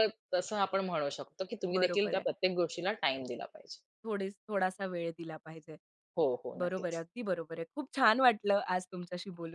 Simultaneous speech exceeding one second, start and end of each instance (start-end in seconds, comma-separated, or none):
none